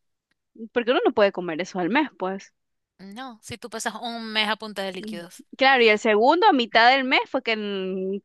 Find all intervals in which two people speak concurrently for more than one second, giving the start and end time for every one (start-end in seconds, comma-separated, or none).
none